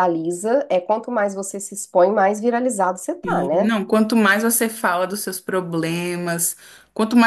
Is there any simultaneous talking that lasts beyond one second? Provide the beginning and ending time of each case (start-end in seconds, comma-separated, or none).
none